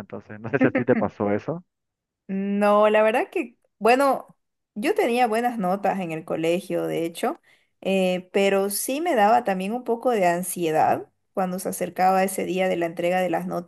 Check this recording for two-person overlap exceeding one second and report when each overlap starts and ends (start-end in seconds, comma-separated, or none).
none